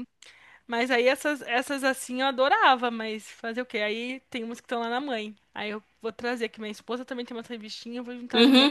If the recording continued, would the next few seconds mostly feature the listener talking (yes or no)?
yes